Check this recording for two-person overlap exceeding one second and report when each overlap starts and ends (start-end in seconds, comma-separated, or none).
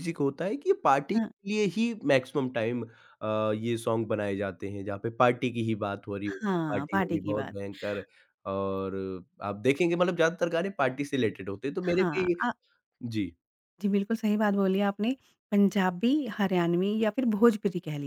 6.3-7.5